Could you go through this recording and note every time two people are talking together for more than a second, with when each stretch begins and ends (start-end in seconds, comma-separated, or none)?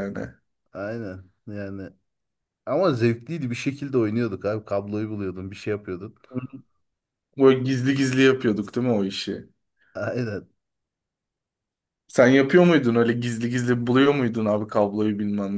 none